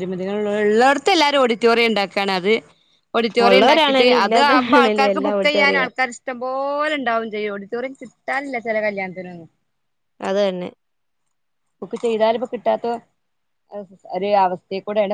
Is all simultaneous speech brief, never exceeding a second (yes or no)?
no